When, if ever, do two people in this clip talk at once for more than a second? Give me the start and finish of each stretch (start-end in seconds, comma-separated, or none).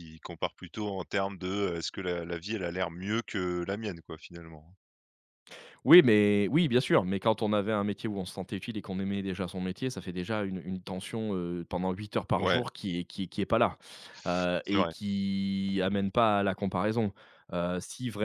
none